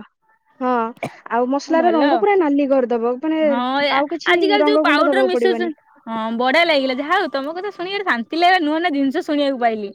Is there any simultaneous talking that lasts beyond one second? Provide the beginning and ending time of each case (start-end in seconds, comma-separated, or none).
4.0-5.8